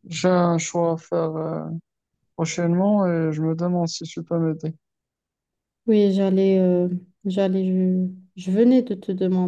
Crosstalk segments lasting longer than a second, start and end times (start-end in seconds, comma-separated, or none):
none